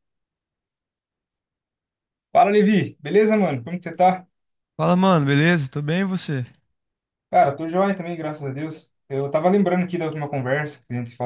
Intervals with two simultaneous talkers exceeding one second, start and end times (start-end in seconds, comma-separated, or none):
none